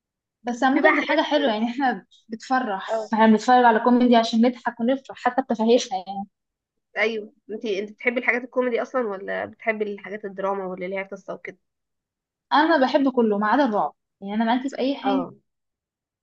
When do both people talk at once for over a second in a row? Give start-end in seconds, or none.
none